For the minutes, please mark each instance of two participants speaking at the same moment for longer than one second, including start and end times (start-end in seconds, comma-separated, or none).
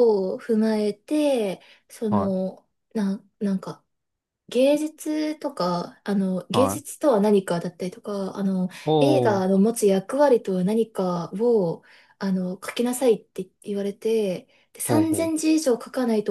none